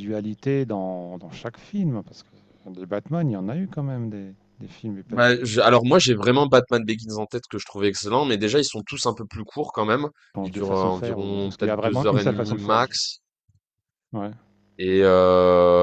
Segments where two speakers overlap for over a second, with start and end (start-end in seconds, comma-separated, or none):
10.4-12.9